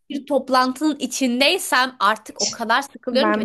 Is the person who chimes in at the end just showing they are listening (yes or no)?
yes